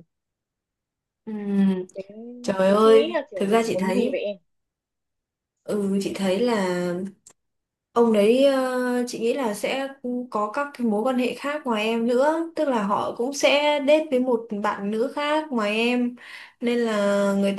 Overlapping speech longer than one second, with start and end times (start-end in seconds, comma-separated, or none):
2.7-4.2